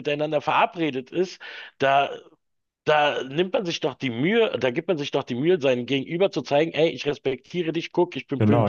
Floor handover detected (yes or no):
yes